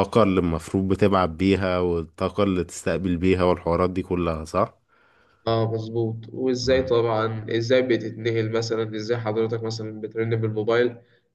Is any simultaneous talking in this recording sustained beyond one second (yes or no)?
no